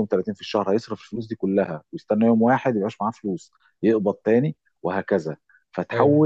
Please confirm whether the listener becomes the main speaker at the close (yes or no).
no